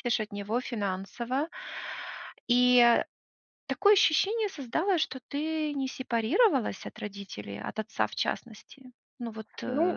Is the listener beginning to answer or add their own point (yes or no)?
yes